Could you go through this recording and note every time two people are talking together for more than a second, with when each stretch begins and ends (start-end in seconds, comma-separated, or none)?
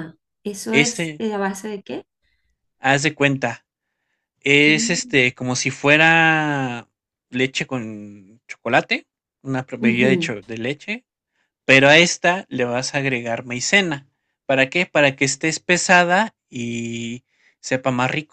none